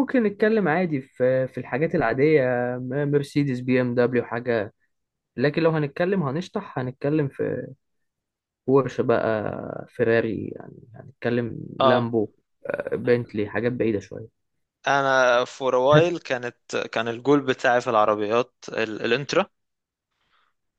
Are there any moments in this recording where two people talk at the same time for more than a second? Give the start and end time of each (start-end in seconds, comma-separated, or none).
none